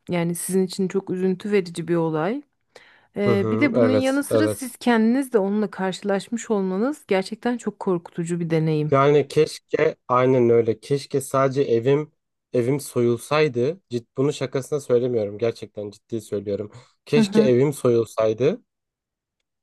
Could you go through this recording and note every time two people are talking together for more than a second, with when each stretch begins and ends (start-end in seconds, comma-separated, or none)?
3.2-4.7